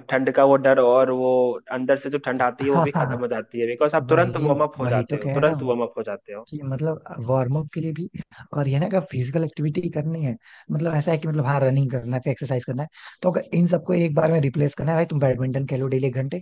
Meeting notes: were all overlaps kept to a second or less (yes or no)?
no